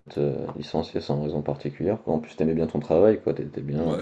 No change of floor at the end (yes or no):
no